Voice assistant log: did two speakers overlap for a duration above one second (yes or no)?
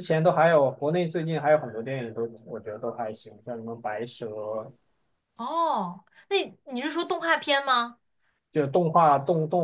no